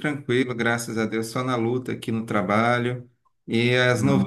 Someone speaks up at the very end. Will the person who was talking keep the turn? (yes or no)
yes